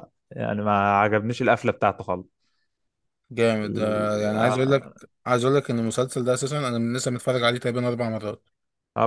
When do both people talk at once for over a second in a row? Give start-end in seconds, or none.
3.6-4.9